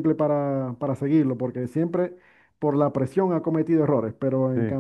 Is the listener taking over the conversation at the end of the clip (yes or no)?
no